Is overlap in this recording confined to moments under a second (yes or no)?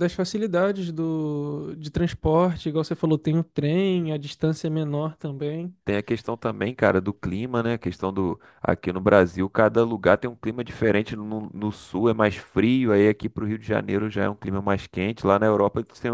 yes